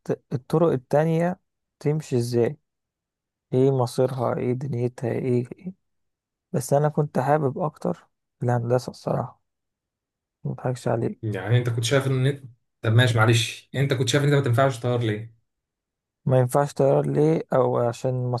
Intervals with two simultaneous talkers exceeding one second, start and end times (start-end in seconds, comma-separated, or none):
none